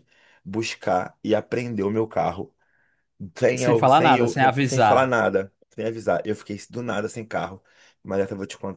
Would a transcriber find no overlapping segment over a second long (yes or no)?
no